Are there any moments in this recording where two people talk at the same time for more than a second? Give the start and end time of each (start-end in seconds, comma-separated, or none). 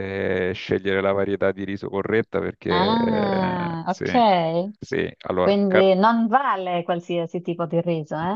2.7-4.2